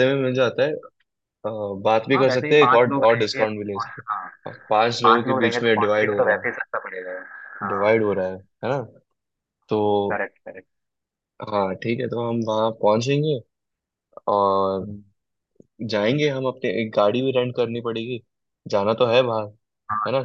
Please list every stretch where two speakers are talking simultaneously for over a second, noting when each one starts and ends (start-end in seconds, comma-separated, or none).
2.1-4.0, 5.0-6.4